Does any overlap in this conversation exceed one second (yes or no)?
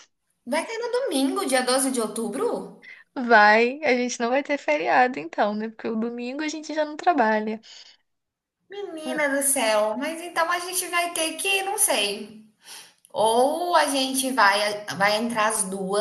no